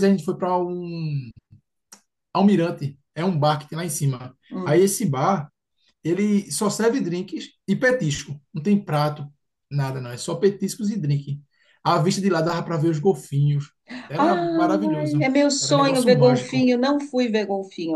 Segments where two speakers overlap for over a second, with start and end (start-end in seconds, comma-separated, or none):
14.2-16.7